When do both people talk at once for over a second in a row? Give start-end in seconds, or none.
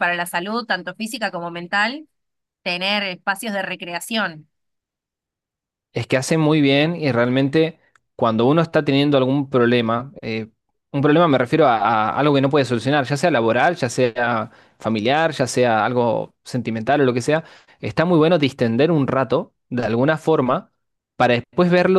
none